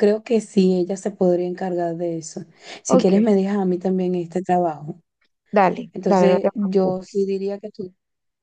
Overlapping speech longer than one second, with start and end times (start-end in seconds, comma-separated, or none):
5.9-7.3